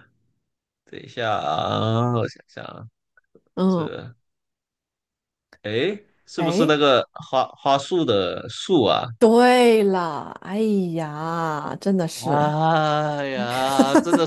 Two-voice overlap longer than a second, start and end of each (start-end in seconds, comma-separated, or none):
none